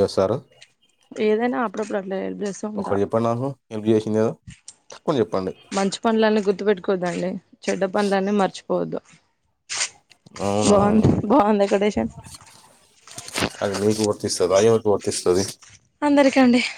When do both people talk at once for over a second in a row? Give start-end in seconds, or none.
none